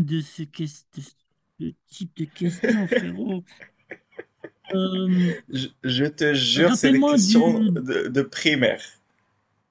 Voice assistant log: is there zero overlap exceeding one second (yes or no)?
no